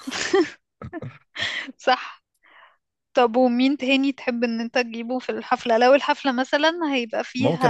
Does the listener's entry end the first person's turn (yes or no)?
yes